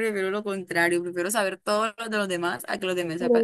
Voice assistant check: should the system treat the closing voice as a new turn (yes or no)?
yes